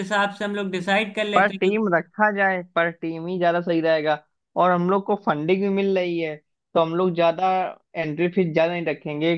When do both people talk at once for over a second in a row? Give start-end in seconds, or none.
none